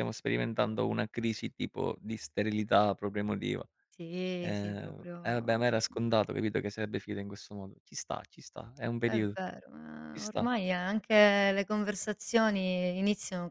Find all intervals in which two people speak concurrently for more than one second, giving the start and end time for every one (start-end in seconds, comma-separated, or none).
4.4-6.0